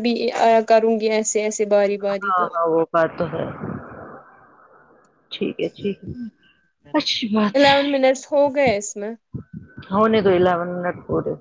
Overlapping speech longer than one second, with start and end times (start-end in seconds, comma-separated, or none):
7.5-8.7